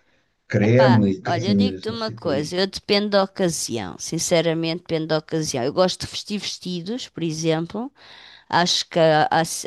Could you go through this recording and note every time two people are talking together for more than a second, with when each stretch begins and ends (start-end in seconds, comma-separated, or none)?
0.6-2.5